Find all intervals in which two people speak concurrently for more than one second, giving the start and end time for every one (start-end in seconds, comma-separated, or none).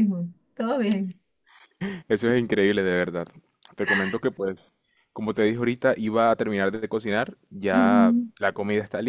none